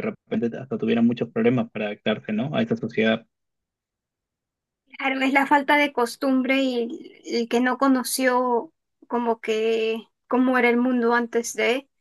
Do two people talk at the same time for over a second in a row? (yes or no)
no